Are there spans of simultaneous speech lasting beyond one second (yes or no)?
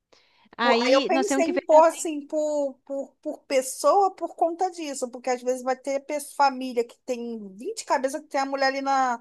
yes